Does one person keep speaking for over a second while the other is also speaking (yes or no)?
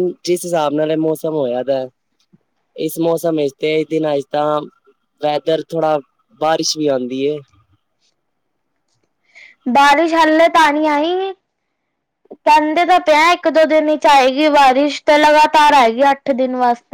no